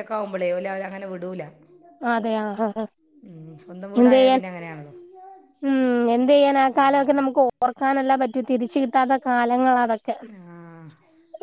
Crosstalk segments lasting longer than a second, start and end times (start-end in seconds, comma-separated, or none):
none